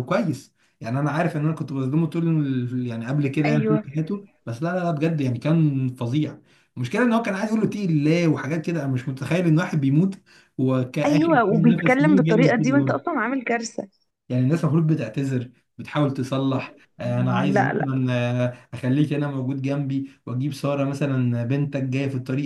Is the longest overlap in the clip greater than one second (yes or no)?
yes